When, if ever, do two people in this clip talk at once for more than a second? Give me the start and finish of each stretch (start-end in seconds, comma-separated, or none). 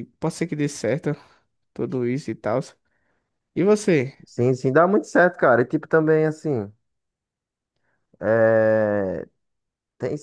none